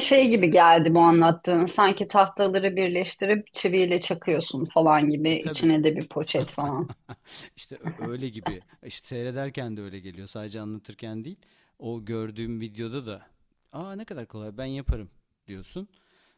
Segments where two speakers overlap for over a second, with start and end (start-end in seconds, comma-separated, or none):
none